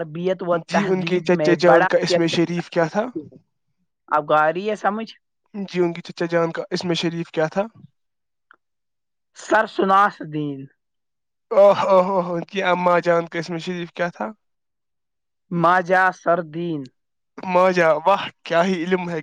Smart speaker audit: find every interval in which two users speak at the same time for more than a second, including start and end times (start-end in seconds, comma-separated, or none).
0.7-2.9